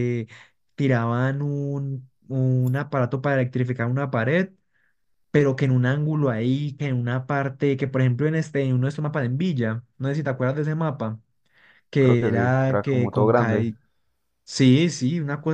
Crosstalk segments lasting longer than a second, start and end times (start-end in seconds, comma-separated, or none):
12.0-13.7